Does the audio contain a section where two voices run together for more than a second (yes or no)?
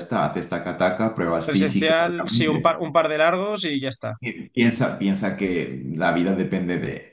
yes